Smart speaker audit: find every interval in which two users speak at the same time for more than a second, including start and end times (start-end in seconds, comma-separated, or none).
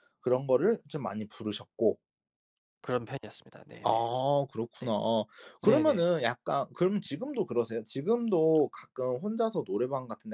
none